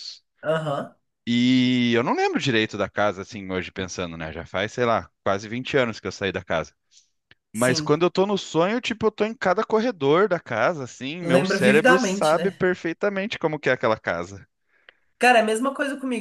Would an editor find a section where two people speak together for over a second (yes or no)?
yes